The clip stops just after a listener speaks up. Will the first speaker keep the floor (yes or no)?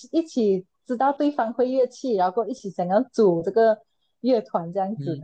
no